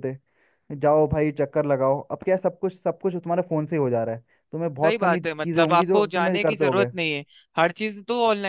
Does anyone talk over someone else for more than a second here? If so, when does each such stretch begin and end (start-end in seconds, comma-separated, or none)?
4.8-6.9